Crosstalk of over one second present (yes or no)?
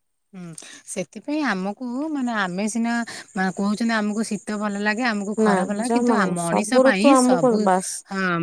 yes